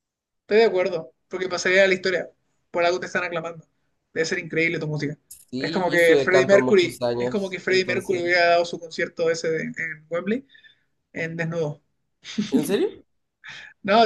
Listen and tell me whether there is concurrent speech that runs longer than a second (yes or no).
yes